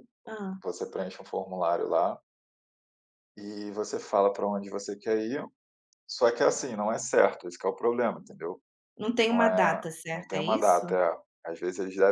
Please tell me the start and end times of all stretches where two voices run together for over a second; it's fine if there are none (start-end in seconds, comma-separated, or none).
9.3-10.8